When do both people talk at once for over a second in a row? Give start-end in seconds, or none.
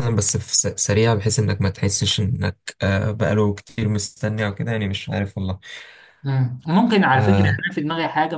none